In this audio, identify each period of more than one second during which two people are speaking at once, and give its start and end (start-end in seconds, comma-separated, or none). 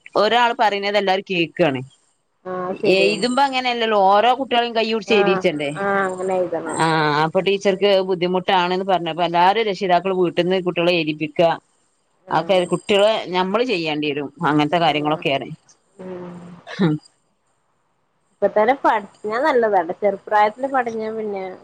none